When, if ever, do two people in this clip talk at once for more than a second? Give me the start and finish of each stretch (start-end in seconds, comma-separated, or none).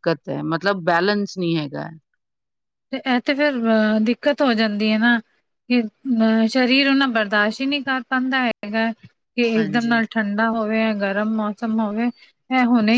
none